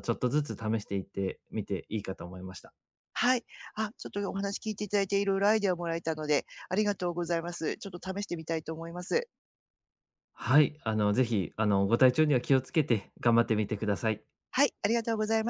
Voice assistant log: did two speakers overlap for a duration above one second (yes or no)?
no